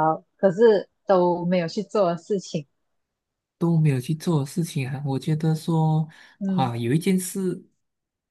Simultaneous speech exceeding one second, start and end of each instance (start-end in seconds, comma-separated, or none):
none